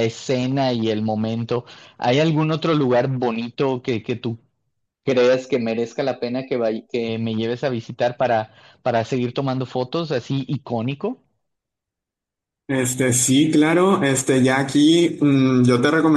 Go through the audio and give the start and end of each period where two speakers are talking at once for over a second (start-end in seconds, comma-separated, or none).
none